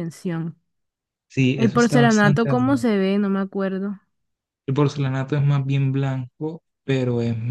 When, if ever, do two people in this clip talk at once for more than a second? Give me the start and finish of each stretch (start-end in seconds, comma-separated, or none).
1.6-2.9